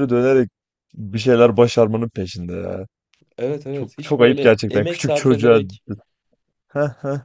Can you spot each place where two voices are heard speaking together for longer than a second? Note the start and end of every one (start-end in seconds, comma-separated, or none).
3.7-5.6